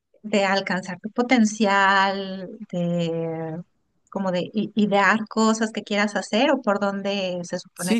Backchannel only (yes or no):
no